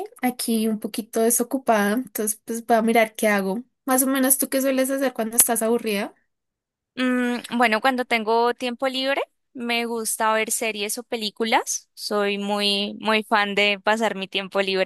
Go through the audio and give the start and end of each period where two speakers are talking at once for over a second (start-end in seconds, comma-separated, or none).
none